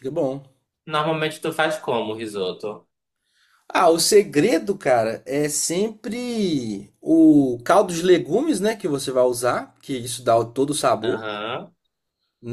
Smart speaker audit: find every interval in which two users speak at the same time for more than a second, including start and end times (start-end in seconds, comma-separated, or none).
none